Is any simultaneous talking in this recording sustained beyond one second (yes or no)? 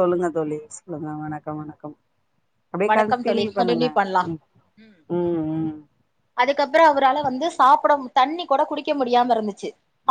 no